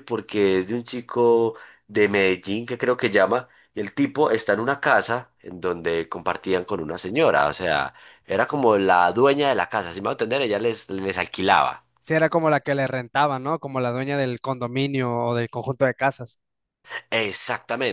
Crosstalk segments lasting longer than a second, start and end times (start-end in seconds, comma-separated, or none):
none